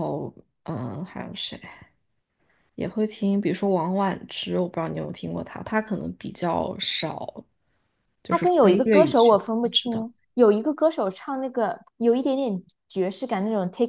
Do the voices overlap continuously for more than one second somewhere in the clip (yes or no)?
yes